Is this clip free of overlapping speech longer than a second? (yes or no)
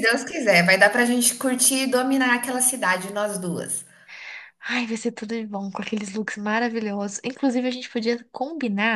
yes